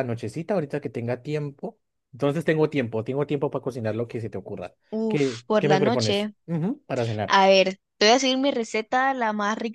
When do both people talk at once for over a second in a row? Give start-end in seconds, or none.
4.9-6.3